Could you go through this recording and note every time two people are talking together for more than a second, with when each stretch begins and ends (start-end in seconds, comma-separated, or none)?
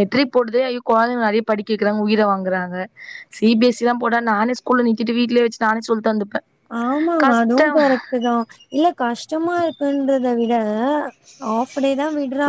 none